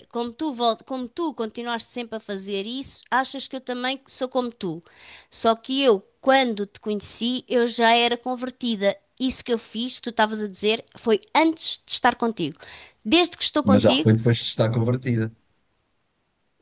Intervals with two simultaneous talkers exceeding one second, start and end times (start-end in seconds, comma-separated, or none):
none